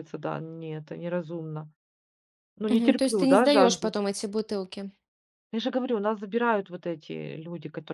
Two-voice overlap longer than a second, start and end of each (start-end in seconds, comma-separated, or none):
2.7-3.9